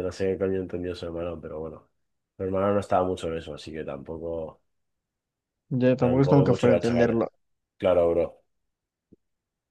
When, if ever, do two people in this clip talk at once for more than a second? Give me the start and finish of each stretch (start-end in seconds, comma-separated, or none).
6.0-7.2